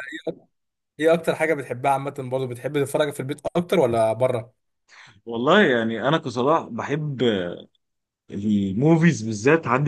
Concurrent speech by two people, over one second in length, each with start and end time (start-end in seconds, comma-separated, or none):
none